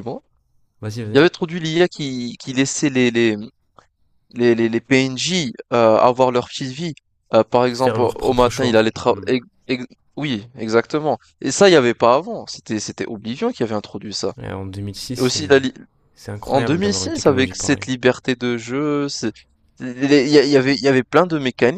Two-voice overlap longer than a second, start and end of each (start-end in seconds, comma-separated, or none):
7.7-9.3, 16.5-17.9